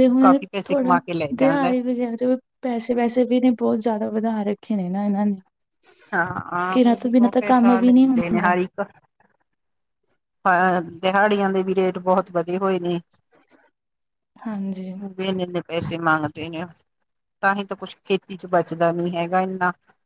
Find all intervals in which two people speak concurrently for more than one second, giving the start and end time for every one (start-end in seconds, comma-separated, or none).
6.7-8.5